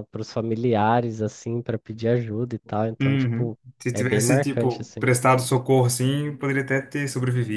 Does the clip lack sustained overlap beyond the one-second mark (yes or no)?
no